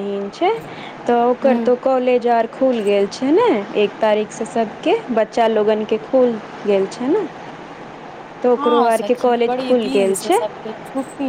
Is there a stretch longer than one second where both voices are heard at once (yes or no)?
yes